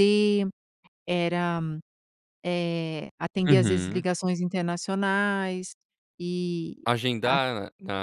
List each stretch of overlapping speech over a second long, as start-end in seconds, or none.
none